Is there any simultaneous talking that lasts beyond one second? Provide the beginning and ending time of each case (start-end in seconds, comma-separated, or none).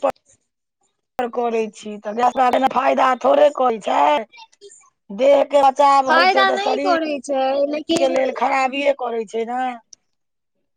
6.1-8.1